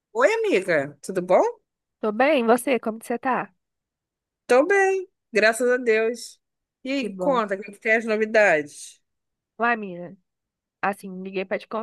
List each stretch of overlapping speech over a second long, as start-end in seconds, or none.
none